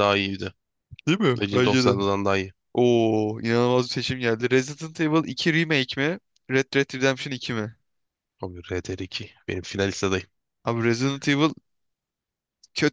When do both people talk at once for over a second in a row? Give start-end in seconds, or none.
none